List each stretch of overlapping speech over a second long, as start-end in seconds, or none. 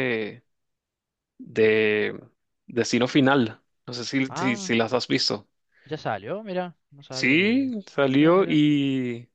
7.1-8.6